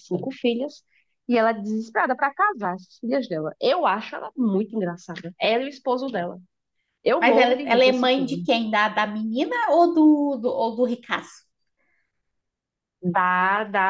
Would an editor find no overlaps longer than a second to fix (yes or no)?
no